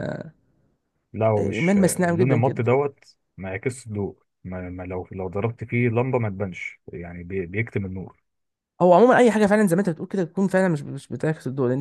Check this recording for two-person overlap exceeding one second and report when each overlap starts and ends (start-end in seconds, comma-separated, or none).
1.4-2.6